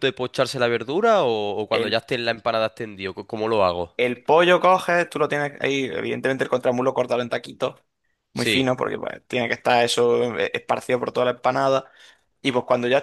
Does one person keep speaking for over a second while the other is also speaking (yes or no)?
no